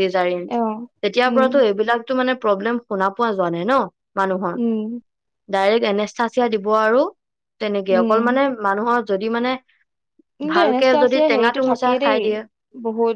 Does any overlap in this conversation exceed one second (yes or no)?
yes